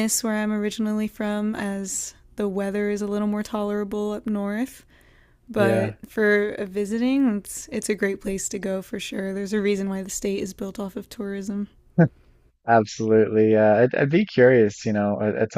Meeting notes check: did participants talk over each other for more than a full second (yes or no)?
no